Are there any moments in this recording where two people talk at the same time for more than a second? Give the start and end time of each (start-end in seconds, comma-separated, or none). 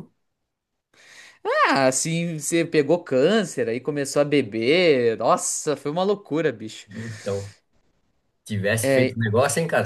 none